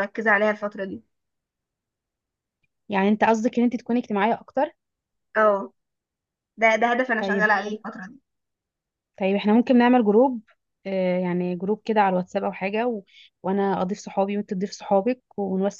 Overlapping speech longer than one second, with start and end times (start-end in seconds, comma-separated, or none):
none